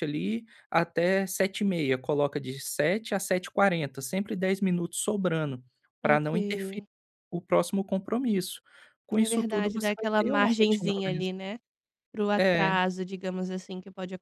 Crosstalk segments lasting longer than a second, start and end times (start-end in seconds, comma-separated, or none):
9.1-11.4